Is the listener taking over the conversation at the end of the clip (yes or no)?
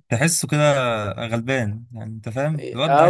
yes